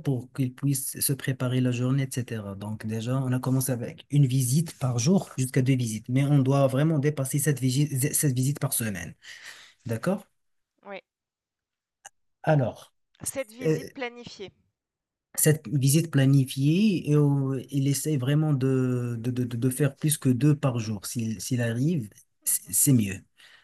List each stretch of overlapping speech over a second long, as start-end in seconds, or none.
none